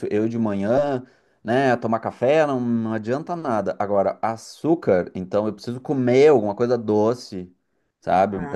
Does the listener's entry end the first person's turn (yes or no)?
no